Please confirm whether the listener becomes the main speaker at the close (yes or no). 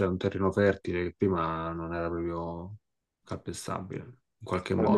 yes